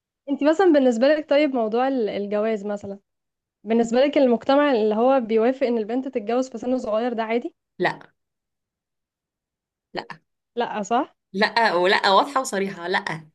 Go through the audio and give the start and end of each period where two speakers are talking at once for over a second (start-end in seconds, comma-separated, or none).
none